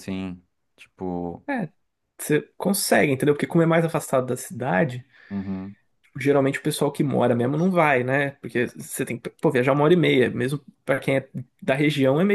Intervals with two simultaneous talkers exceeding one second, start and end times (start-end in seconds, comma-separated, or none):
none